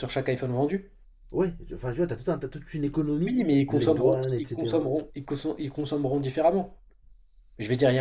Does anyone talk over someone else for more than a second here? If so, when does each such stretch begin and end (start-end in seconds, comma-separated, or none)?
3.3-4.9